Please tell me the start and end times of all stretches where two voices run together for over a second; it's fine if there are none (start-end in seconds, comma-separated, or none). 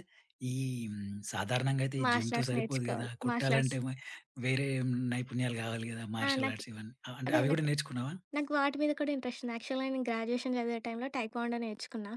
2.0-3.8